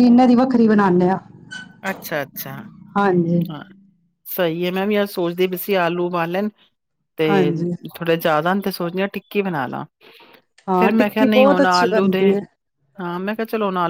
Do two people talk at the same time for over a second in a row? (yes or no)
yes